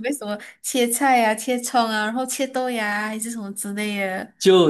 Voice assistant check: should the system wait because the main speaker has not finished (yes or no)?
no